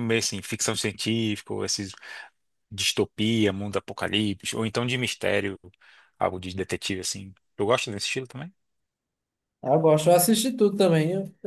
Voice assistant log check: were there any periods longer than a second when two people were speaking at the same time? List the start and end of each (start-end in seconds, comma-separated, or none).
none